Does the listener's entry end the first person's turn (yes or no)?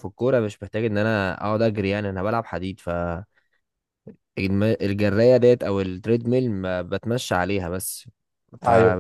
no